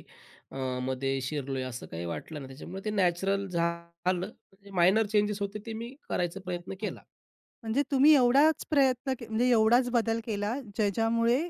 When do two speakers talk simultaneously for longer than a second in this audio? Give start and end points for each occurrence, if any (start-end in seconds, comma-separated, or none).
none